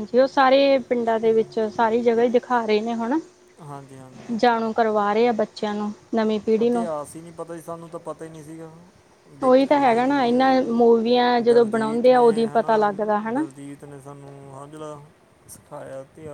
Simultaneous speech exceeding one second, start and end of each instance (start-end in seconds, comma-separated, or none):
9.4-13.4